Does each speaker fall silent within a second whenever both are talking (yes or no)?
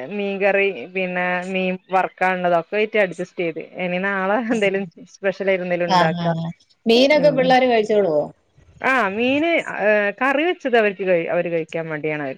no